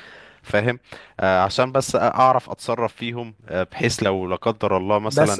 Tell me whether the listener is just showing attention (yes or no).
yes